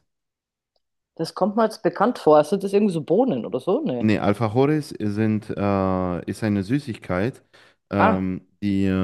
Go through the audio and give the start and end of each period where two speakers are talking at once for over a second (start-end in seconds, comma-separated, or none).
none